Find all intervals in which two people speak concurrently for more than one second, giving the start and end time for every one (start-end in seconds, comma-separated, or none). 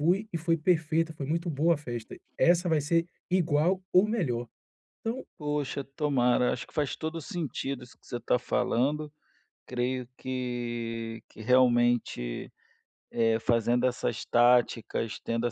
none